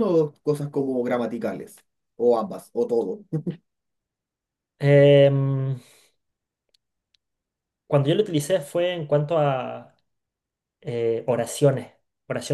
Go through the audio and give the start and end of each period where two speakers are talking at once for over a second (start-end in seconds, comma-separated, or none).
none